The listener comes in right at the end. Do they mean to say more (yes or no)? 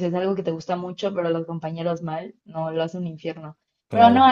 no